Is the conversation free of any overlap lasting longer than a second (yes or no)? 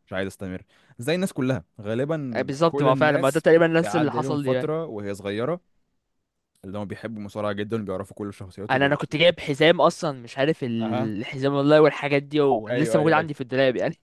no